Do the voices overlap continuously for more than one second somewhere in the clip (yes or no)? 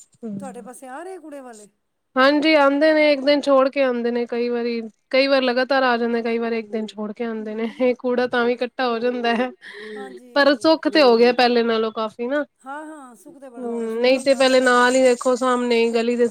yes